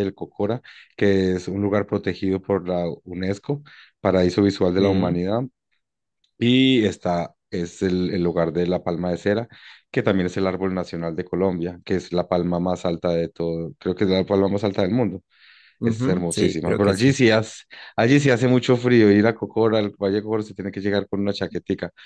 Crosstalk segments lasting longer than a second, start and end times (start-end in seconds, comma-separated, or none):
15.8-17.2